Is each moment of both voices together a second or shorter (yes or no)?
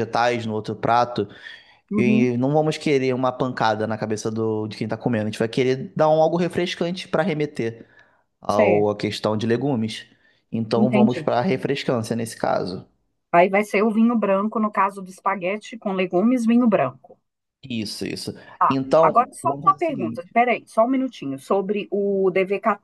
no